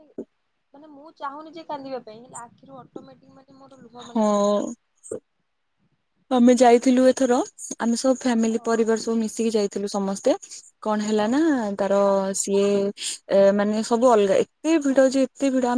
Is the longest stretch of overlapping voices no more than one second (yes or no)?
yes